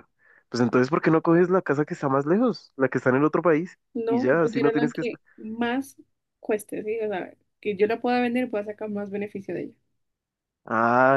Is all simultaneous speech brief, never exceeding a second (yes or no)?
no